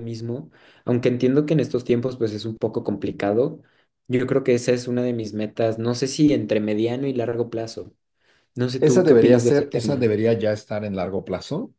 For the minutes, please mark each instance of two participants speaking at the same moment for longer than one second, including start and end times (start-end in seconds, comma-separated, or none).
8.8-10.1